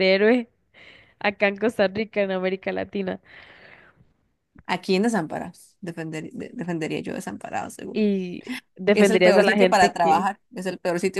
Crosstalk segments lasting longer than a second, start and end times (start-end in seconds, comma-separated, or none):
8.9-10.3